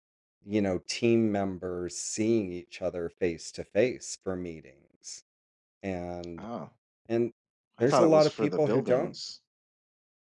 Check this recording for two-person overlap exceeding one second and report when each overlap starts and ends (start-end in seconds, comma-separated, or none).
7.8-9.2